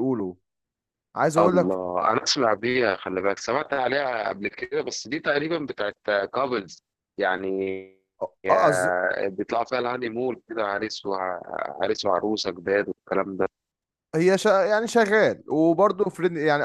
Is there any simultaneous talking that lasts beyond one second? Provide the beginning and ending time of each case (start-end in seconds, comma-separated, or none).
none